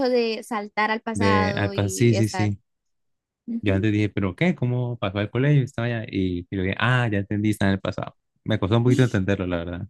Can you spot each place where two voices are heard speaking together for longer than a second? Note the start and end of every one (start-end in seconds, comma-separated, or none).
1.1-2.5